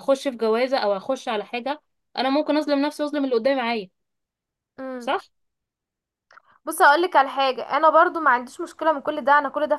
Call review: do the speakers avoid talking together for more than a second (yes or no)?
yes